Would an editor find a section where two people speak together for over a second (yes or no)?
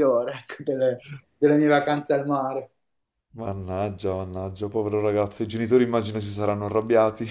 no